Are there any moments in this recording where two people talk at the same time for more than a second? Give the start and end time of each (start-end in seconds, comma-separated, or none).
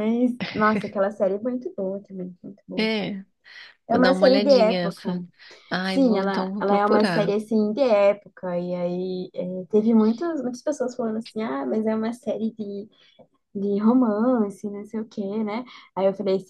3.9-5.2, 5.8-7.3